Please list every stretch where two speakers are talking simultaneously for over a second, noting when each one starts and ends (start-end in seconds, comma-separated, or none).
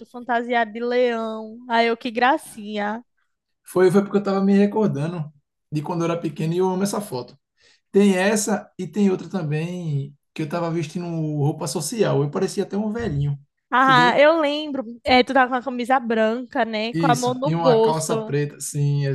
16.9-18.4